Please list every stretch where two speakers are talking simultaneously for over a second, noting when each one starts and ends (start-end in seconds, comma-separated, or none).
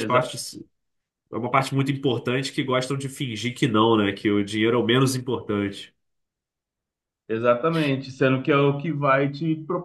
none